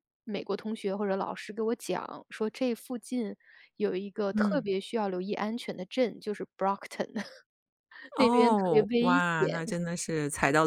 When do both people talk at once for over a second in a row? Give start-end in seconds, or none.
8.2-9.6